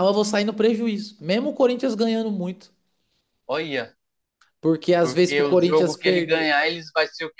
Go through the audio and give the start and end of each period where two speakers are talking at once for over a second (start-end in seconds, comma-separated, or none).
5.0-6.5